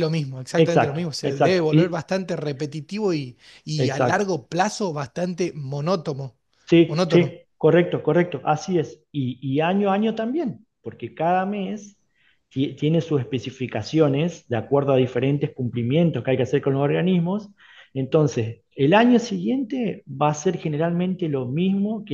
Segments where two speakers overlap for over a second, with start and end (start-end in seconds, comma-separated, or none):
0.6-2.0